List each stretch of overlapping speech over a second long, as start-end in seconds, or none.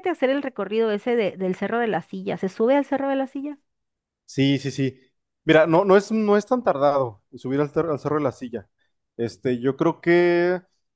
none